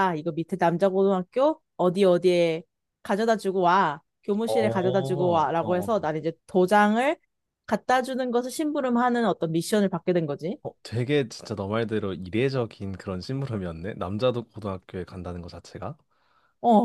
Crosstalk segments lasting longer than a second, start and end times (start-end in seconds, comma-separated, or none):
4.4-6.1